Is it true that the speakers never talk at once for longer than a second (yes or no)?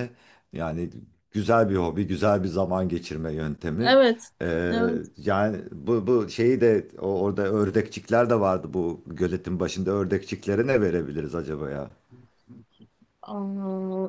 yes